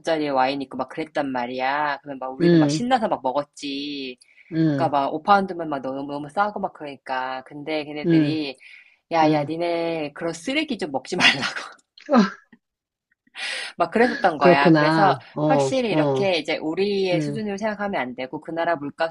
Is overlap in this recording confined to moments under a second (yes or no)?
no